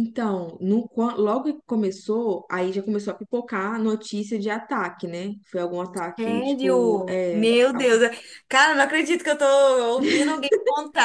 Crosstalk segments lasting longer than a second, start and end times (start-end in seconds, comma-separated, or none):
6.2-7.9